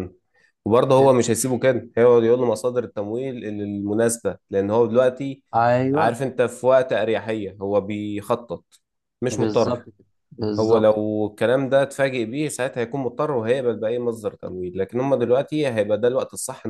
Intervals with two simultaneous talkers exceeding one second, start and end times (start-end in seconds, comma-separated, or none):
none